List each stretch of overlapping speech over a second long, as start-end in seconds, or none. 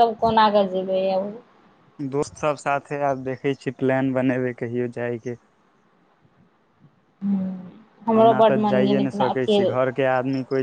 8.2-9.9